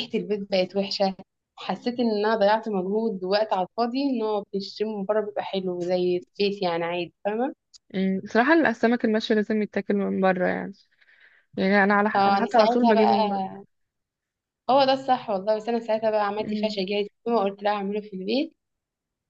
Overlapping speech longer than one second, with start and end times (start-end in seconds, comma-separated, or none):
12.1-13.4